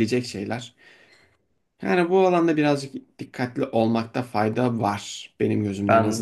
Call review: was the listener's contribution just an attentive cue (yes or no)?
no